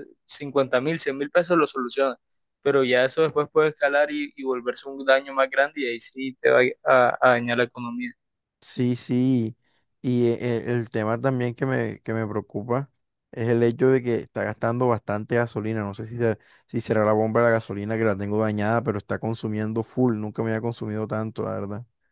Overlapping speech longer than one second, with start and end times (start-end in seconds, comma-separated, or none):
none